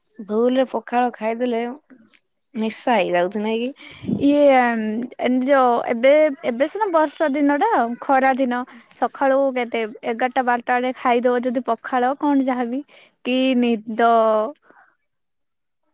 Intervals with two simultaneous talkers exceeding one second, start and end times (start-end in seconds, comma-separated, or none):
none